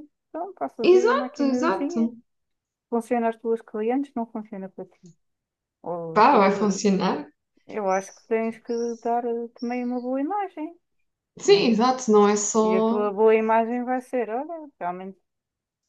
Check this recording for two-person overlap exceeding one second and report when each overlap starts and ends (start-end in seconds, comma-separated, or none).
0.8-2.1